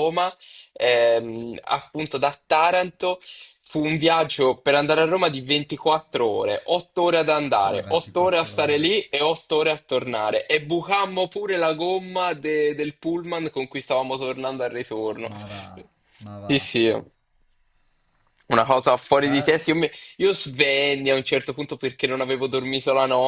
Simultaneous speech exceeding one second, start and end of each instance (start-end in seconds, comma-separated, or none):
7.6-9.0